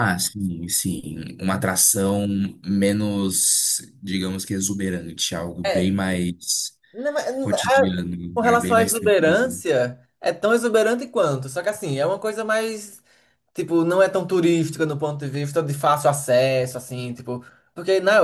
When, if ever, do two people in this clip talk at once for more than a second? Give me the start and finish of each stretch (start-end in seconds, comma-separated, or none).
8.3-9.6